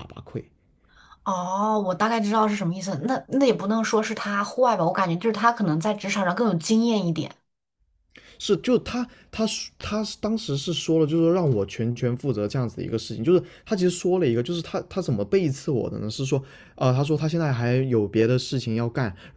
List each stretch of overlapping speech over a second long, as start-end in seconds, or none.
none